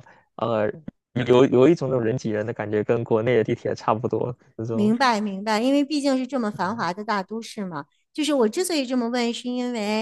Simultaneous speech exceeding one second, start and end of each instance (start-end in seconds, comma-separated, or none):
none